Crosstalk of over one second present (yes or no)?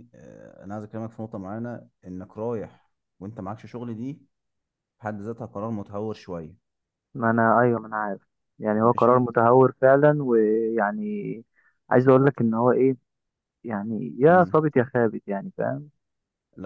no